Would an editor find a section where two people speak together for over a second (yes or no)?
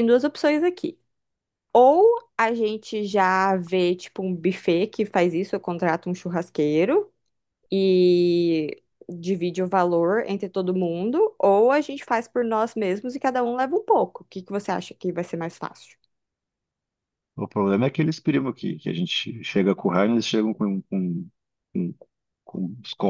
no